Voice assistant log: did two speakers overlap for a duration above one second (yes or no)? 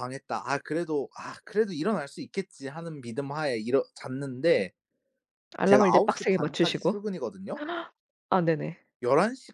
yes